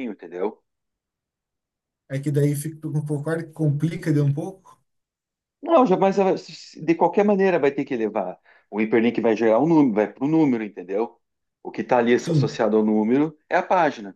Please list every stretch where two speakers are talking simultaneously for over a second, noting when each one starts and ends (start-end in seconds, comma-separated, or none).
none